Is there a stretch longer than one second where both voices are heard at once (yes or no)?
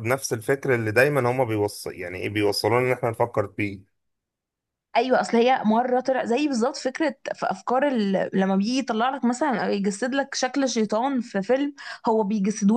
no